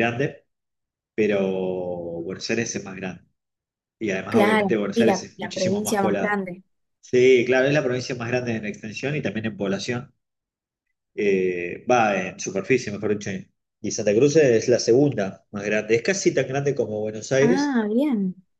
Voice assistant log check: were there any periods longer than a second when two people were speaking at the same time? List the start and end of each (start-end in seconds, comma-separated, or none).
4.3-6.4